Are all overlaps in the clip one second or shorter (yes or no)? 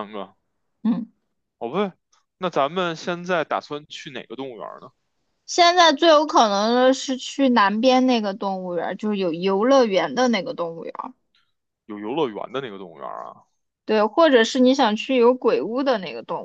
yes